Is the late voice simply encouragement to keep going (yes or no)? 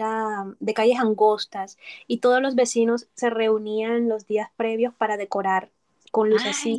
yes